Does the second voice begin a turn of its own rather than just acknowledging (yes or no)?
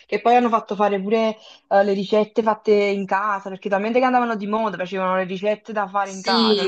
yes